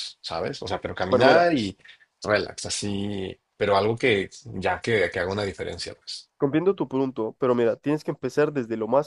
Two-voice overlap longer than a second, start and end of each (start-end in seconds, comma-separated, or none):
none